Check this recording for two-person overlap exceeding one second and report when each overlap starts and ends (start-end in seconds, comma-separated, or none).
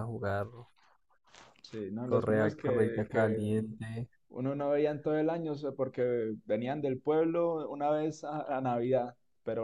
2.0-3.5